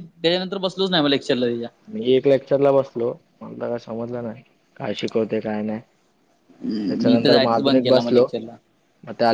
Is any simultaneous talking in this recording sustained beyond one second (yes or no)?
yes